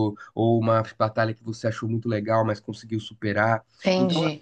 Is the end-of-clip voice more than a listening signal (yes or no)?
yes